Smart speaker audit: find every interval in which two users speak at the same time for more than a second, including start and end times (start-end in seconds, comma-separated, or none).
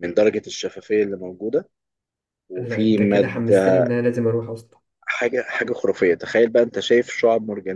2.6-3.9